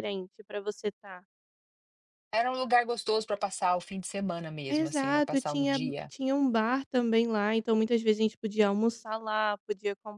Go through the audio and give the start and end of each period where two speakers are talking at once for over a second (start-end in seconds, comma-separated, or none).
4.7-6.1